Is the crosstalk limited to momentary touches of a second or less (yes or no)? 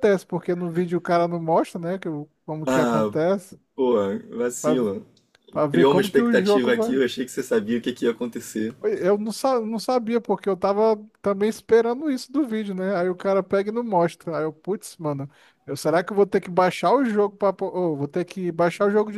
no